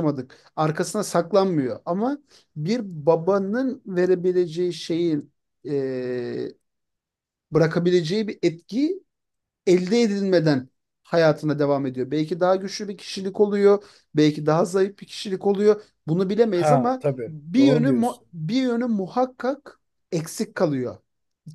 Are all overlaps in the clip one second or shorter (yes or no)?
no